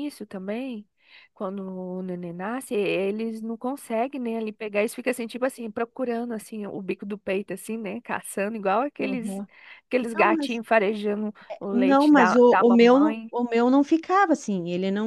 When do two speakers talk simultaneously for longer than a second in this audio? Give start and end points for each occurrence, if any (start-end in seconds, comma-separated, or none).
11.7-13.3